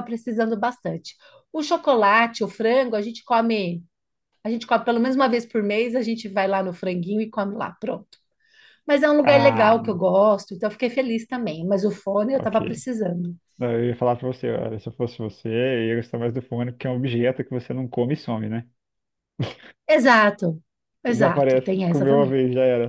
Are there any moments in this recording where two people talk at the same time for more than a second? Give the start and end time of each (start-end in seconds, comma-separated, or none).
21.1-22.4